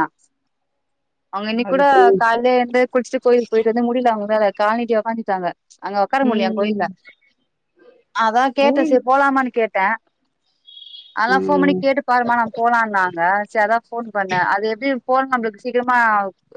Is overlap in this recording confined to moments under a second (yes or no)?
yes